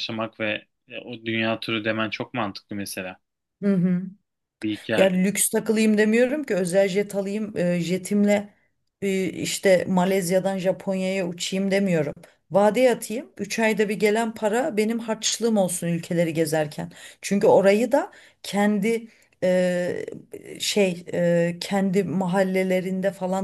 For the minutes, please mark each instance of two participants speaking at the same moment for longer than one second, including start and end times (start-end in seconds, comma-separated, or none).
none